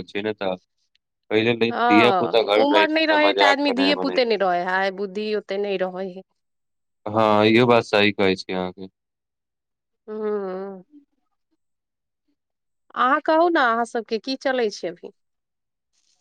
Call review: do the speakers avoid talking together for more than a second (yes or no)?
no